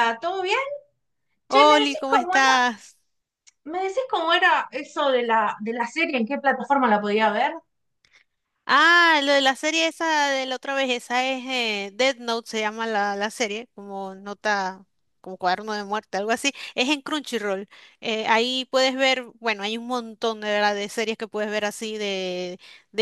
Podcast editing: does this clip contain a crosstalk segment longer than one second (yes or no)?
yes